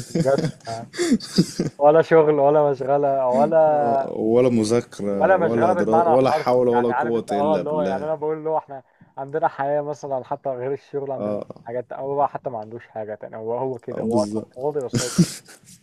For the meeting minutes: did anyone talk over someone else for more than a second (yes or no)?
yes